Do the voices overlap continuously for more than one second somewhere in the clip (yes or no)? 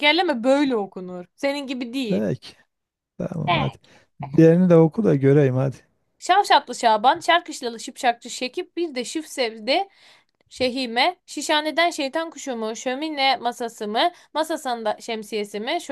no